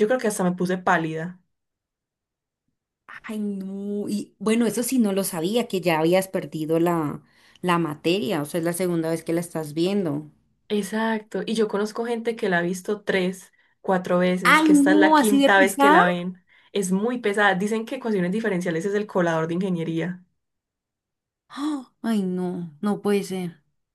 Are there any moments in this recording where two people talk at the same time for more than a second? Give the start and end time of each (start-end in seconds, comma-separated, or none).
14.4-16.0